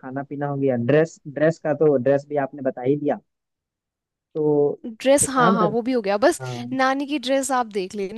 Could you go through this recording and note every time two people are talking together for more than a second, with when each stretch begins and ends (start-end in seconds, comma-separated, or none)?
none